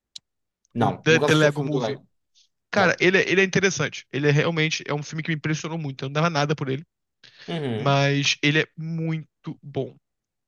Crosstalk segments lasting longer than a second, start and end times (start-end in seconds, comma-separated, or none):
0.8-2.0